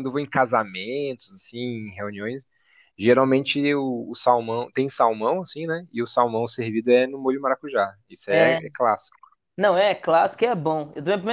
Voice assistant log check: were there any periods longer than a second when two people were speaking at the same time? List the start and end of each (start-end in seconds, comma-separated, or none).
none